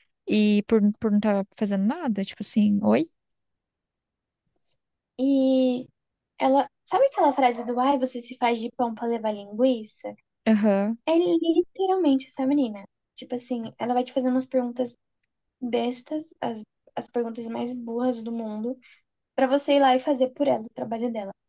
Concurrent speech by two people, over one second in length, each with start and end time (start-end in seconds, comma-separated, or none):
none